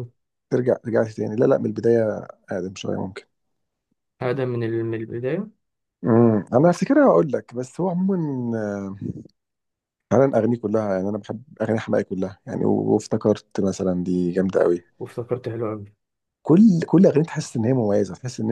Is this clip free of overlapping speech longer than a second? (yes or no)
yes